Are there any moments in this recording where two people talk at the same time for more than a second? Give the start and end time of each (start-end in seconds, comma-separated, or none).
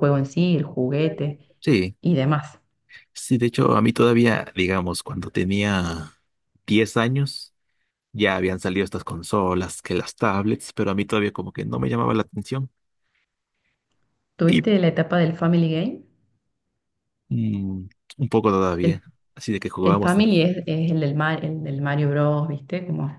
none